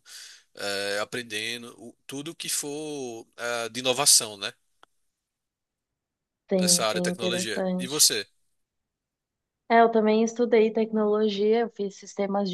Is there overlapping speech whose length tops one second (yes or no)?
yes